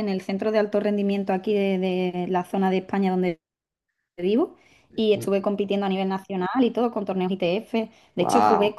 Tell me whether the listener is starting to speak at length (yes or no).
no